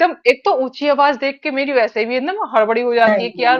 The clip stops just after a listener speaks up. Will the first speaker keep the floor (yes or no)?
no